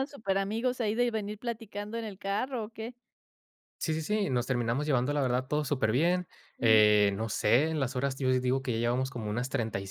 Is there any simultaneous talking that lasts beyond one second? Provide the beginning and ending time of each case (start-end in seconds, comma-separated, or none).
none